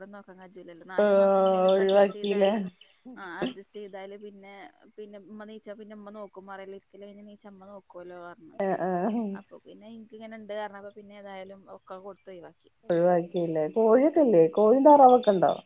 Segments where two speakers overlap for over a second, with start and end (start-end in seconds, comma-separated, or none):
1.0-2.5